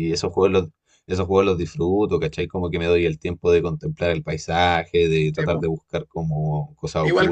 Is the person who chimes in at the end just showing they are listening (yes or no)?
no